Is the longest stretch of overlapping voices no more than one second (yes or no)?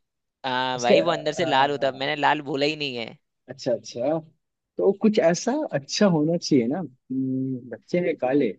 no